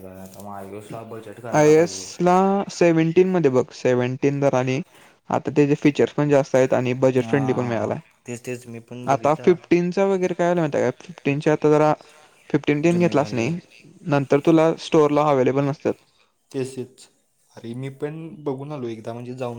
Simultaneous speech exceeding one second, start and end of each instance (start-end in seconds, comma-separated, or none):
7.2-9.6